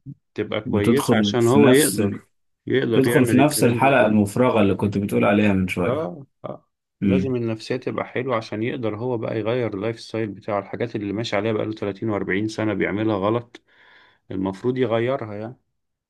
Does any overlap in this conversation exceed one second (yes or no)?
yes